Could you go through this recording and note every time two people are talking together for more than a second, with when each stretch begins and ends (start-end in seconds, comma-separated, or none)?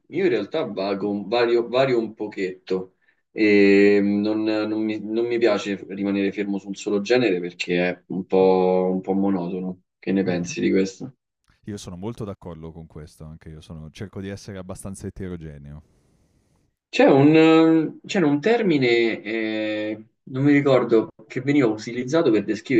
none